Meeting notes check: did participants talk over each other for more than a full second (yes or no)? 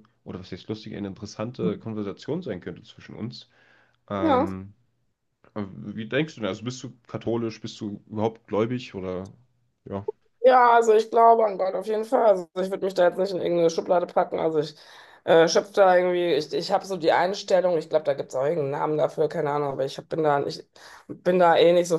no